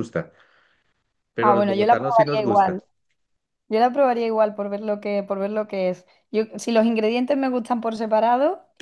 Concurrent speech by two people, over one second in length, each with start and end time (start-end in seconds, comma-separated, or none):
1.4-2.8